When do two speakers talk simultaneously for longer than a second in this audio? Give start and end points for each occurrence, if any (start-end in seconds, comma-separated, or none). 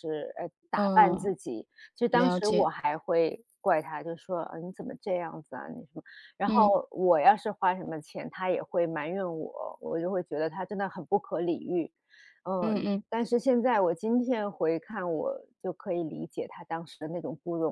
none